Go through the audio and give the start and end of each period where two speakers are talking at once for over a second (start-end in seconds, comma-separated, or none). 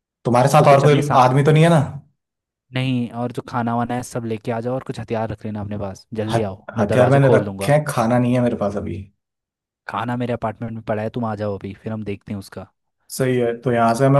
6.3-7.8